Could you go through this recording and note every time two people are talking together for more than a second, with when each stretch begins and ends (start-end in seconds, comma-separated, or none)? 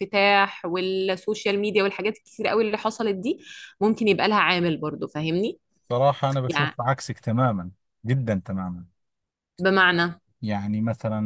none